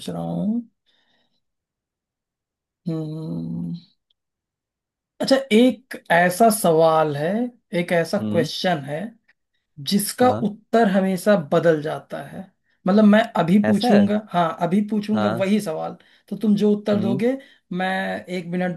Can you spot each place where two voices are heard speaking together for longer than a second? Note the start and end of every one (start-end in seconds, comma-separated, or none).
none